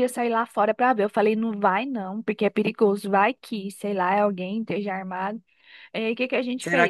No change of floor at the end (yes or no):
no